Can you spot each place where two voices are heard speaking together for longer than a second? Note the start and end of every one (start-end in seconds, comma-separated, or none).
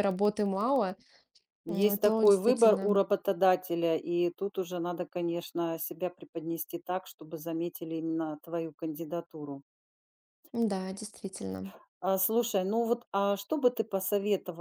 1.7-3.0